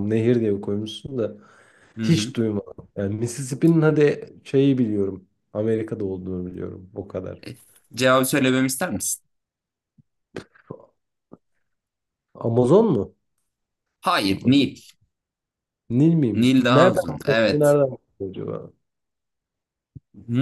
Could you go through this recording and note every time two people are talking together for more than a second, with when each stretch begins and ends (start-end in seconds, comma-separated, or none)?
16.3-17.8